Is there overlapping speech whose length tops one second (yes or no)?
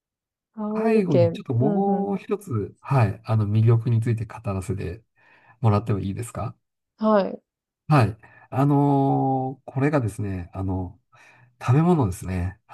yes